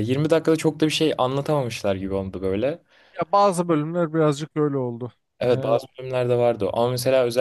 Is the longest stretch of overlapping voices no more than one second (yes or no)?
yes